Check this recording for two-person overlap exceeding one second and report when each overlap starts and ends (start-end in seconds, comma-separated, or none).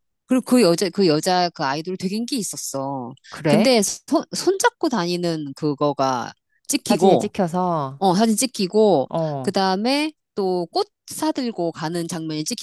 none